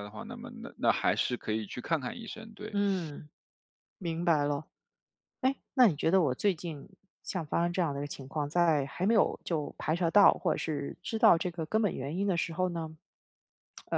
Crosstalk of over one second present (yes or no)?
no